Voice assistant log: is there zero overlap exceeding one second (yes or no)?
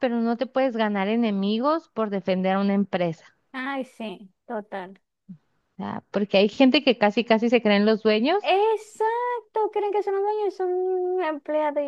yes